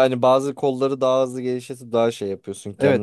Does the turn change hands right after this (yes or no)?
yes